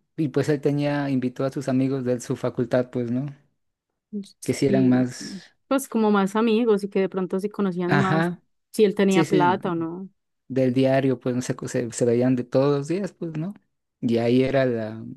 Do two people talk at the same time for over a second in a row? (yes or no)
no